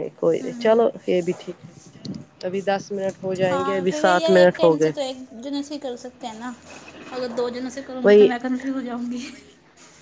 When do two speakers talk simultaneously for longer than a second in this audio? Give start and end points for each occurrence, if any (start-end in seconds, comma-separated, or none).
3.5-4.9